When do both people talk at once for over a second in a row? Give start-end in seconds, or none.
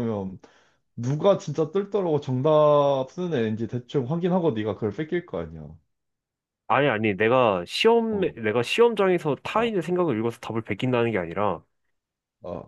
none